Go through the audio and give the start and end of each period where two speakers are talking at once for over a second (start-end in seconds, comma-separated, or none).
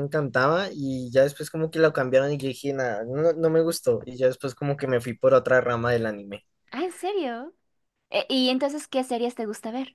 none